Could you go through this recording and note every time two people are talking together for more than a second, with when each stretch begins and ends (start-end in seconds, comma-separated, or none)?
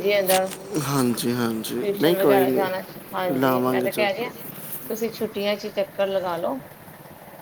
1.0-4.1